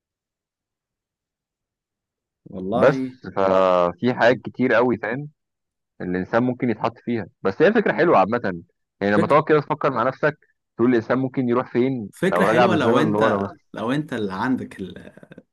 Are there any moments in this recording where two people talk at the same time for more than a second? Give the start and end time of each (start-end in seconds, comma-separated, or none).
12.1-13.7